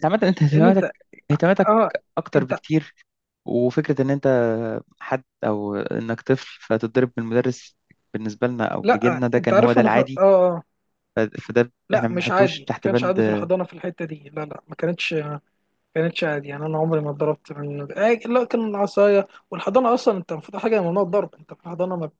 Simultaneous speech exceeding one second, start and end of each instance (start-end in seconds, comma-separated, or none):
8.8-10.2, 11.9-13.2